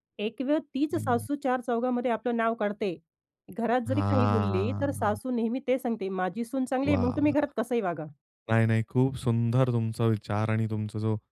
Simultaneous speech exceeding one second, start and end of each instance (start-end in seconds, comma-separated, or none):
3.9-5.2